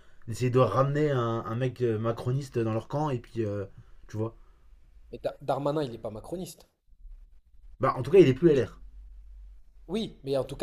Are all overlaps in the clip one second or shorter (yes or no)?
yes